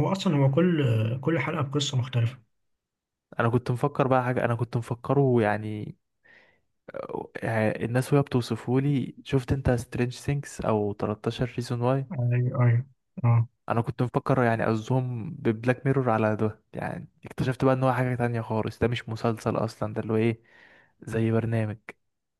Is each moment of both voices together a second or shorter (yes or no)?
yes